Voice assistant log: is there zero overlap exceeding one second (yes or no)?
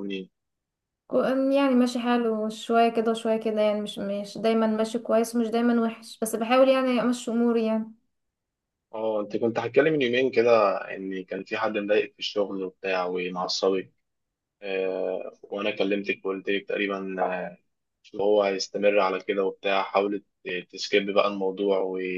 yes